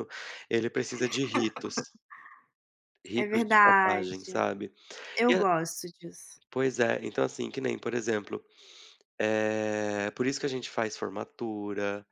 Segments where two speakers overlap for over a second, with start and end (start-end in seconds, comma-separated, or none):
3.2-4.5